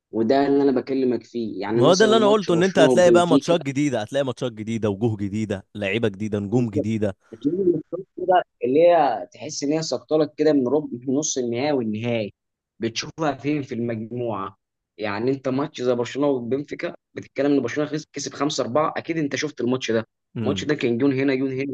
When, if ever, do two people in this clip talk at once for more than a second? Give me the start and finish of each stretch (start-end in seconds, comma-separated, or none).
1.7-3.6